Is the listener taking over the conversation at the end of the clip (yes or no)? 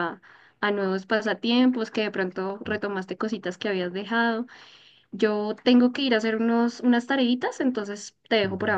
yes